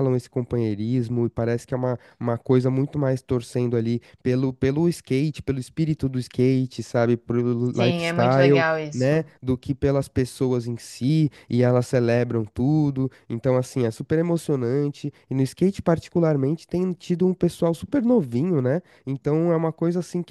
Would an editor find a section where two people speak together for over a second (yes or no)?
yes